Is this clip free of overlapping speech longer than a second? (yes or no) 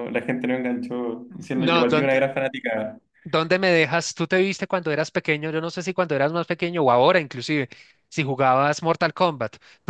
yes